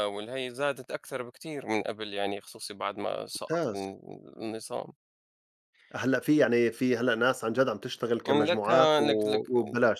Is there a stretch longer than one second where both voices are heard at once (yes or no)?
no